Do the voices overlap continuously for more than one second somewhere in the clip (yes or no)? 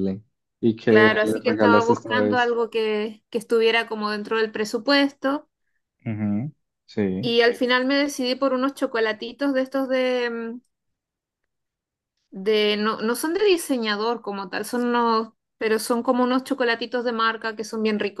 yes